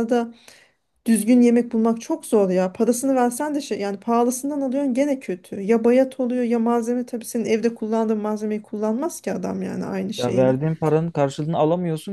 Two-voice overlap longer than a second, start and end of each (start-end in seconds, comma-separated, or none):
none